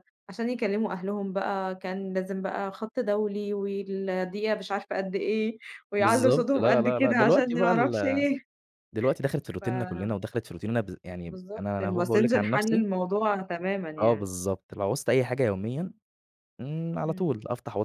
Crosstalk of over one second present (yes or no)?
yes